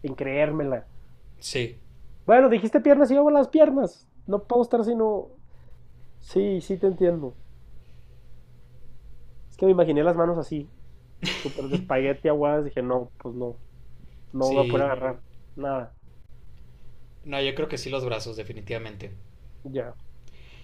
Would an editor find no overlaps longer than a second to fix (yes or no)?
yes